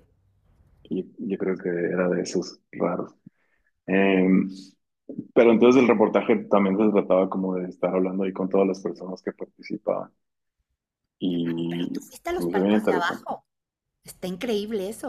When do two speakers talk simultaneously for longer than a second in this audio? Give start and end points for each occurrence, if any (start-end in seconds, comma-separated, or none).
11.7-13.3